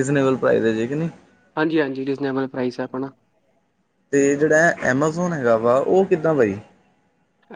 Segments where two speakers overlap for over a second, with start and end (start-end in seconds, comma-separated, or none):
none